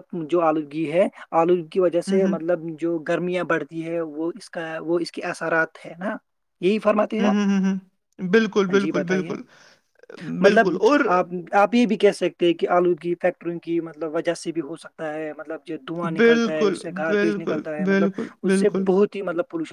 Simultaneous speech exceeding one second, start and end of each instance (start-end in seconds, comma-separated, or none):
16.2-18.8